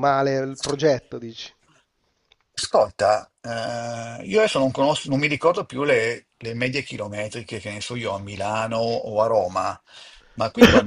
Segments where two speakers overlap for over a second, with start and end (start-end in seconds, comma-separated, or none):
none